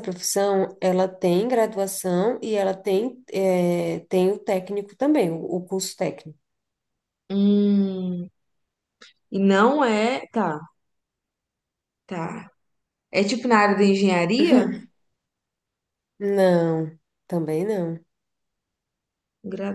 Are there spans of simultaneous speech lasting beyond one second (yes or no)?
no